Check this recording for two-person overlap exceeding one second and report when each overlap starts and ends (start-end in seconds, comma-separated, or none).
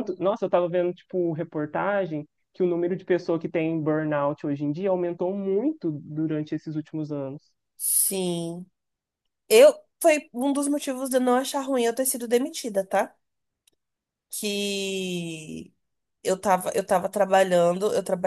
none